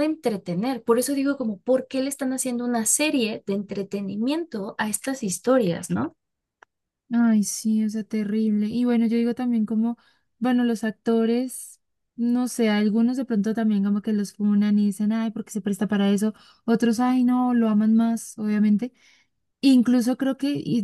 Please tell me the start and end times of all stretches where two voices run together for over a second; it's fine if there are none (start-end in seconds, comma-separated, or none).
none